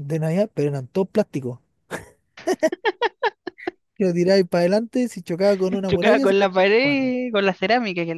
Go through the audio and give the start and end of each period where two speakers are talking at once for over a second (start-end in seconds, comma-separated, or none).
5.9-7.1